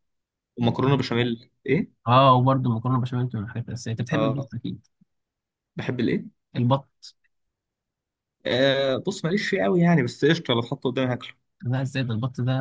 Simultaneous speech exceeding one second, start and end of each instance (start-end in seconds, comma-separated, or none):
none